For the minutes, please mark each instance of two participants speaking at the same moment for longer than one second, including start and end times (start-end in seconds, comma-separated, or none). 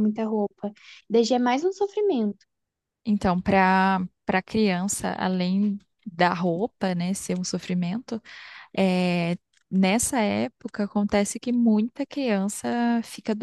none